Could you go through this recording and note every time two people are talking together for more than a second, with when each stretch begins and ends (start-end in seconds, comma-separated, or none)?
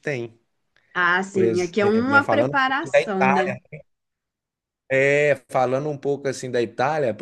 1.3-3.6